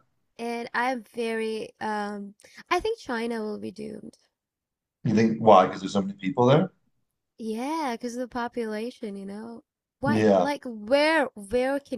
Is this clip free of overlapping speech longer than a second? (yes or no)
yes